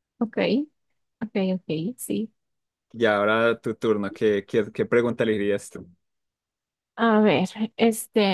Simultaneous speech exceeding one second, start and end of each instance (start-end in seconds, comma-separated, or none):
none